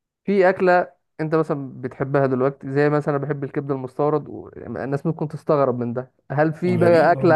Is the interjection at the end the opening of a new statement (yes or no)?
no